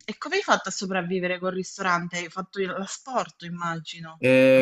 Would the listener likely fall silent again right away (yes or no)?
no